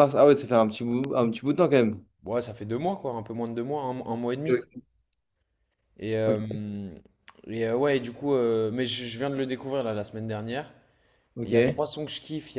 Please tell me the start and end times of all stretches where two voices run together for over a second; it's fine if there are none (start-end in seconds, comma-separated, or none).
none